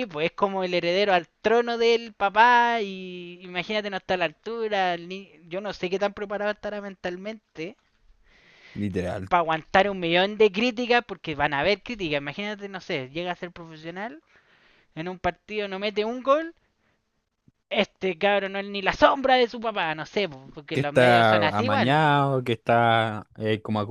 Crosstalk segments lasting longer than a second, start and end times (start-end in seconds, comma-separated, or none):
20.7-22.0